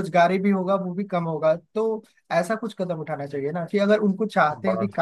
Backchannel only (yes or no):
yes